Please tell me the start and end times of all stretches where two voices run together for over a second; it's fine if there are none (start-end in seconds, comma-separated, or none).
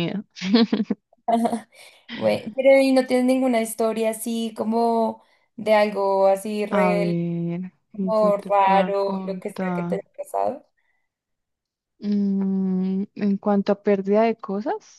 7.9-10.0